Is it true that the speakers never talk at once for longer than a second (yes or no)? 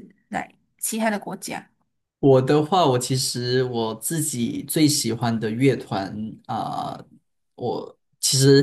yes